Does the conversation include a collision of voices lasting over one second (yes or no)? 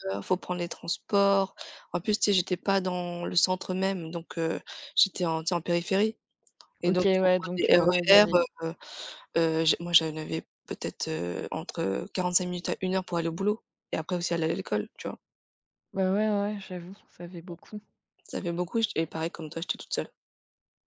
yes